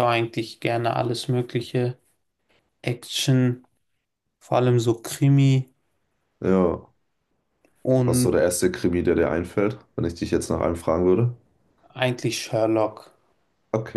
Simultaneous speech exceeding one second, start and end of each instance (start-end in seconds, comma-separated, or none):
none